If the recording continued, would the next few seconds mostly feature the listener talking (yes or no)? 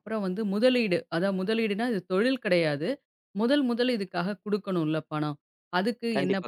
no